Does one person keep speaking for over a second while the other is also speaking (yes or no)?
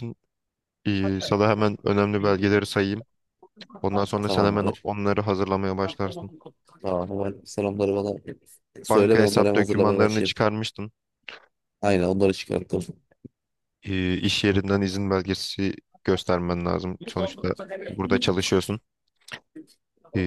yes